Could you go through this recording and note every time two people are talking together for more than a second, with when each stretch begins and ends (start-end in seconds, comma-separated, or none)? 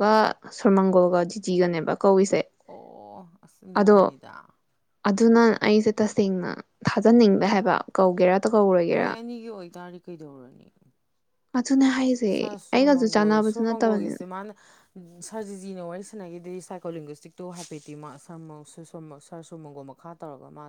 12.3-14.2